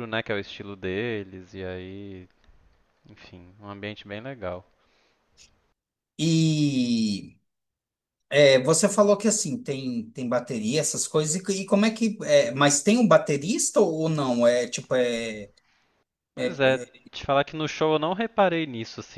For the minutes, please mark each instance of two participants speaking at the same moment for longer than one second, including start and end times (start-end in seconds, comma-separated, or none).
none